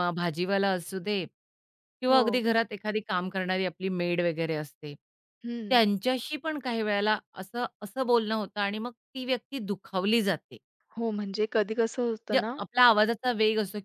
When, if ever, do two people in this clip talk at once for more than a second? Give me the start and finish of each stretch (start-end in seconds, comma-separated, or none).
none